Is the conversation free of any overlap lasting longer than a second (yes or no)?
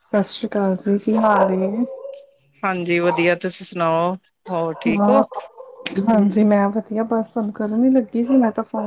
yes